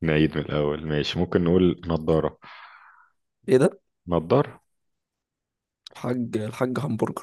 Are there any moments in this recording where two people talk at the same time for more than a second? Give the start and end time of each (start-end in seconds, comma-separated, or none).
none